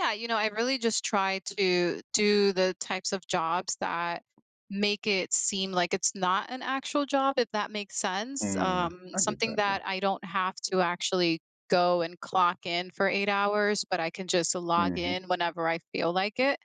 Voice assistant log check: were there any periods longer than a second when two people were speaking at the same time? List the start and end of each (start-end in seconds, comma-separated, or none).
8.4-9.8